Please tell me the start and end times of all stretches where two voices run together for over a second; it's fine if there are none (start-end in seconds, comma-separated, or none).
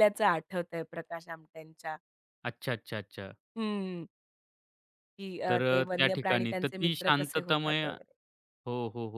5.5-7.8